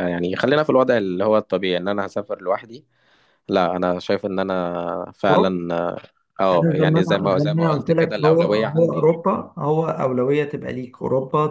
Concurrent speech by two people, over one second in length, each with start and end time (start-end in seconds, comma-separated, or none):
6.5-9.2